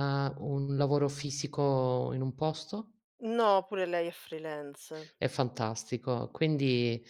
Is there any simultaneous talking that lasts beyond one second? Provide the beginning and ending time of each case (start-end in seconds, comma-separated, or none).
none